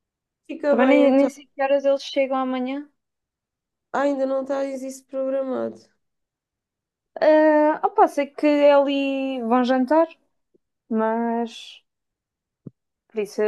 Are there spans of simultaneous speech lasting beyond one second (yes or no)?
no